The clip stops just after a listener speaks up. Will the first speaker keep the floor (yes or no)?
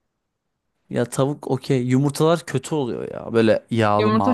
no